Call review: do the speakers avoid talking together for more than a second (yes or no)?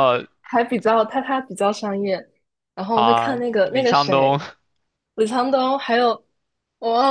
no